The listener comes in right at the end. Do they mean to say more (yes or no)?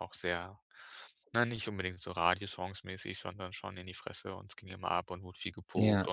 no